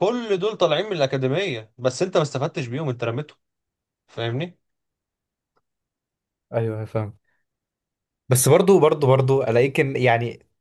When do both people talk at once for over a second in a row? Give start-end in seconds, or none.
none